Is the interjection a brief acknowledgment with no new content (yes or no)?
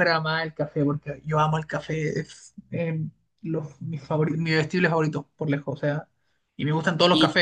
yes